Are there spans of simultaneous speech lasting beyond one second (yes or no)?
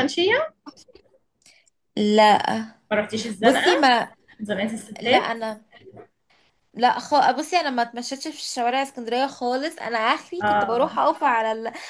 no